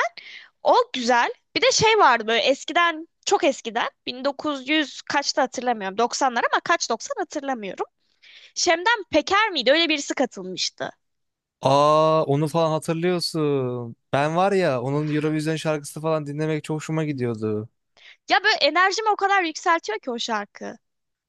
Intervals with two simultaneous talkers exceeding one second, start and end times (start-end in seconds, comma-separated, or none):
none